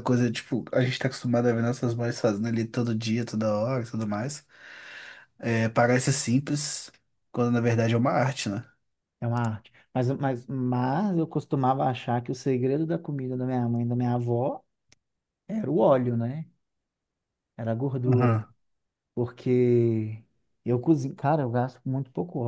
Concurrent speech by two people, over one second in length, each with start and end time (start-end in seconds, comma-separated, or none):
none